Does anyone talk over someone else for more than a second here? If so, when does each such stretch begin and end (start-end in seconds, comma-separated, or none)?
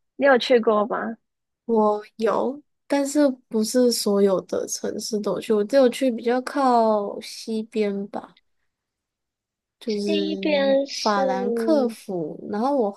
9.8-11.2